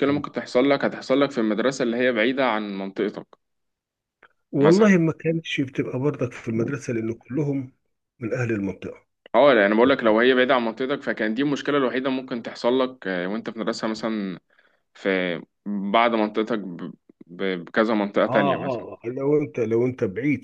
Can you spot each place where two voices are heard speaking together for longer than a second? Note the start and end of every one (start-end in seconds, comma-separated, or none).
none